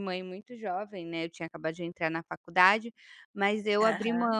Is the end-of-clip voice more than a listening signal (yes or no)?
no